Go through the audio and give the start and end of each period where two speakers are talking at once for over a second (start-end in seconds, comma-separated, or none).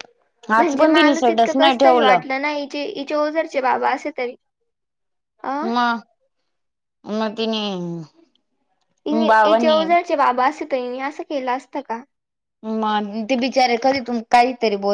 0.6-2.2